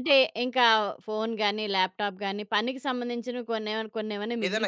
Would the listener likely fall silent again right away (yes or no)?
no